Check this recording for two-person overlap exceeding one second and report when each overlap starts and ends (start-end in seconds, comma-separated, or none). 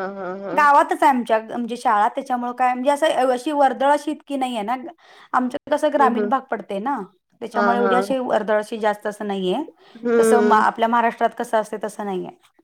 none